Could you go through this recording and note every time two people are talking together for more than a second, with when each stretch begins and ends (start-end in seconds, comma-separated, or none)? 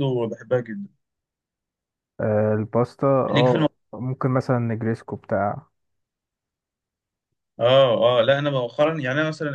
none